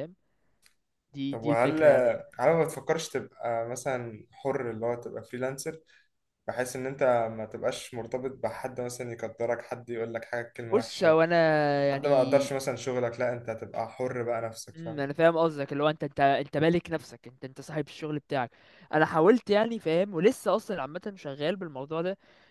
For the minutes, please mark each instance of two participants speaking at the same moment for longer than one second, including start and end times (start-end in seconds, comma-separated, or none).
none